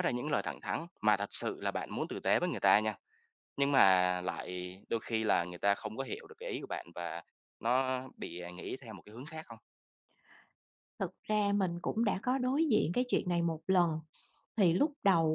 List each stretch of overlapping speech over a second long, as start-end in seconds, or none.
none